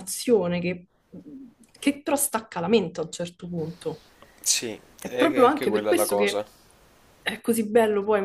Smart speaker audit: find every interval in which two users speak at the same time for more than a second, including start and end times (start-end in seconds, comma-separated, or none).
5.0-6.4